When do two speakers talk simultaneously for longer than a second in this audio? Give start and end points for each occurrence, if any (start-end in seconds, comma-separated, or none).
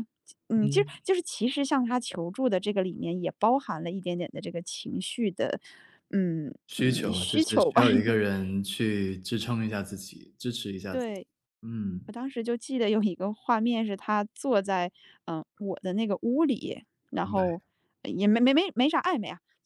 6.7-8.2